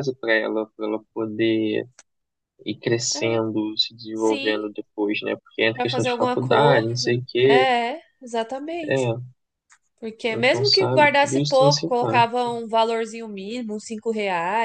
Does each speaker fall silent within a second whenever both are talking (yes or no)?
no